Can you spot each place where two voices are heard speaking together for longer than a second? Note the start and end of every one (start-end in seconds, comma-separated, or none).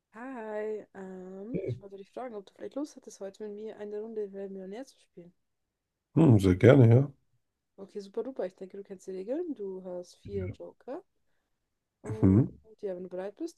none